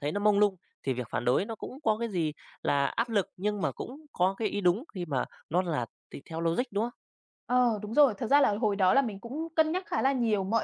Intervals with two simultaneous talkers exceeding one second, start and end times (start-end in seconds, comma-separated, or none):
none